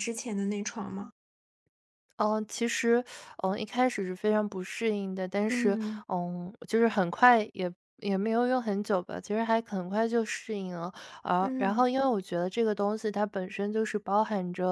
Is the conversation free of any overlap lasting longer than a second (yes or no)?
yes